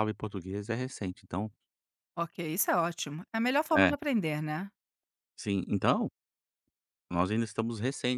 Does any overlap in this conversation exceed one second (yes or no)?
no